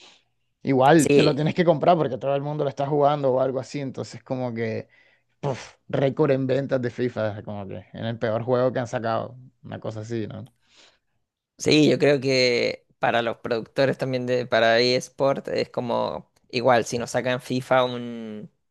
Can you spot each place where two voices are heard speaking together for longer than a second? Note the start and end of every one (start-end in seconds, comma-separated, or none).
none